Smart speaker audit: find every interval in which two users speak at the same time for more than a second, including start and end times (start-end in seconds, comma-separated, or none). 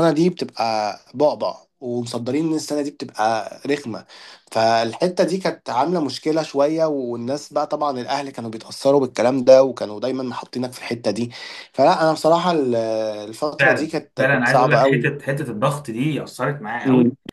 13.6-15.1